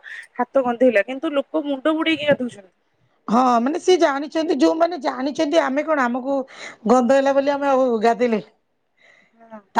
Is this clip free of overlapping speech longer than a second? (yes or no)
yes